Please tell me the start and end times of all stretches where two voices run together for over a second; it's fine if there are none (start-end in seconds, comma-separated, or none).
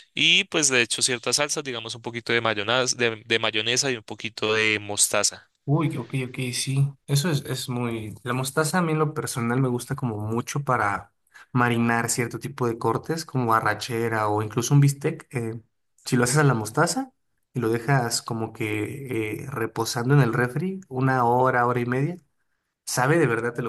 none